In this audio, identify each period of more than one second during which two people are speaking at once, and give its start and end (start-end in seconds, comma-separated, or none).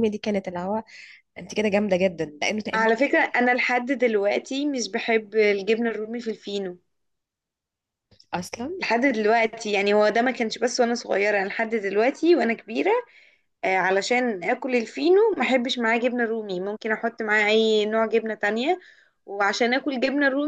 none